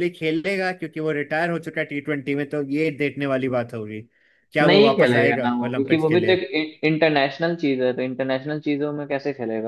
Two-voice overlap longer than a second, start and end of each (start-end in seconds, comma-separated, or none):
4.6-6.3